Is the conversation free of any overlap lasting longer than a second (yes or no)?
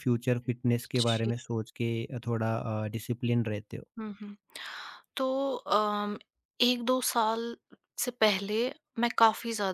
yes